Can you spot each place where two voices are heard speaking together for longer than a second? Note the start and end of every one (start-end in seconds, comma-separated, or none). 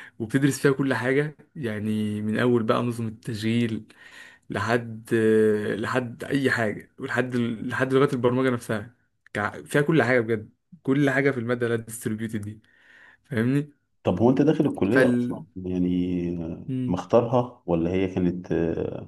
none